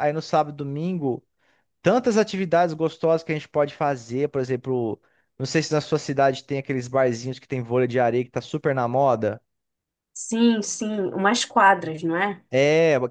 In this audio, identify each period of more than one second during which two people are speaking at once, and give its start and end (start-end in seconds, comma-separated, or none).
none